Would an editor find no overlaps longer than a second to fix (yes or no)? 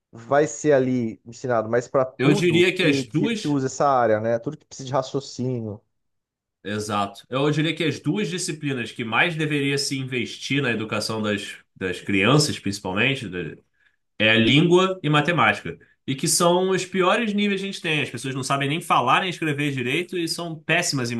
no